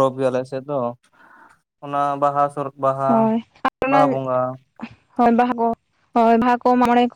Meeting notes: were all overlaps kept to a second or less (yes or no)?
yes